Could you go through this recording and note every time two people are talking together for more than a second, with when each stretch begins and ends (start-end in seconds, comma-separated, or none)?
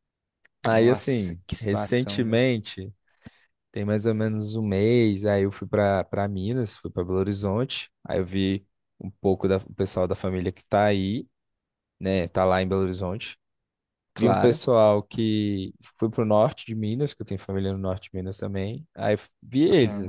0.6-2.4